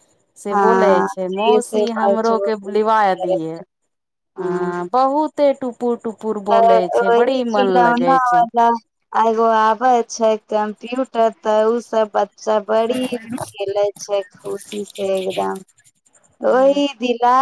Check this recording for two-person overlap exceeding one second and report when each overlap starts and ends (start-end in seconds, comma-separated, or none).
0.5-3.4